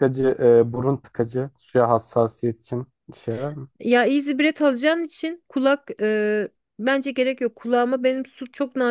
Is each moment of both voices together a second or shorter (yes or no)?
yes